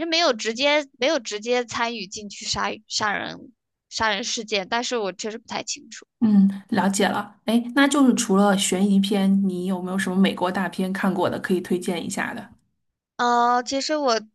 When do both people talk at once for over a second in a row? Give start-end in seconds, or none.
none